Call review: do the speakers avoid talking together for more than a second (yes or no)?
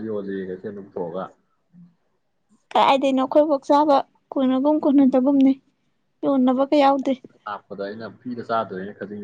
yes